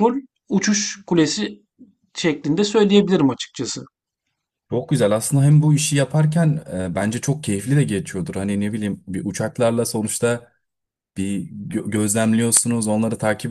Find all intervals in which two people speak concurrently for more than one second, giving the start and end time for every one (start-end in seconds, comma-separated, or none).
none